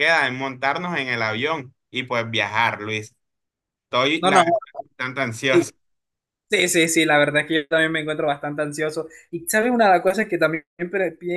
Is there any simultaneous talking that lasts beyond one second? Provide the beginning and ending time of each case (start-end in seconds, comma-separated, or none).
none